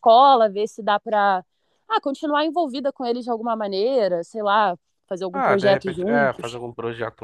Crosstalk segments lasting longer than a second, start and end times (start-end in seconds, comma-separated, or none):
5.3-6.6